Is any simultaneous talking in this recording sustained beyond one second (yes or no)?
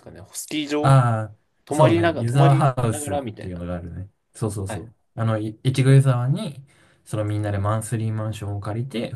yes